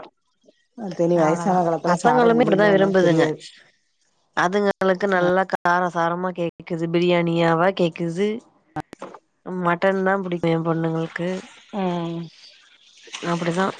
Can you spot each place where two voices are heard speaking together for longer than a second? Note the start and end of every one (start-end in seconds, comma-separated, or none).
1.2-3.2